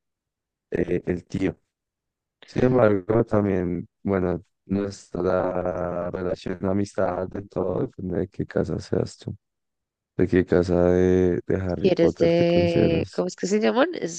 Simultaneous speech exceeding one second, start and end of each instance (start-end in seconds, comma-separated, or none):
11.8-13.2